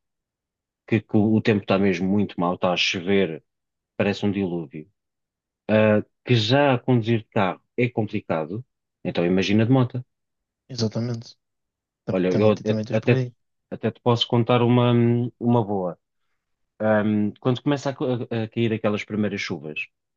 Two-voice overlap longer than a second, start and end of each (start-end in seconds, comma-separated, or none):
12.1-13.3